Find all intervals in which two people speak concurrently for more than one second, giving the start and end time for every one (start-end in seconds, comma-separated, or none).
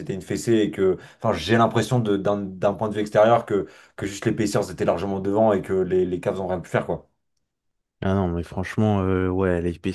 none